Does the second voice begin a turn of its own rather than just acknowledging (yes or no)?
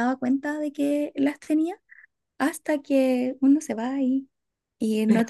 no